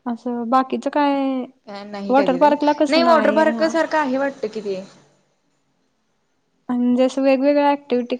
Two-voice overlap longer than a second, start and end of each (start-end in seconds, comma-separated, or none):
2.1-3.7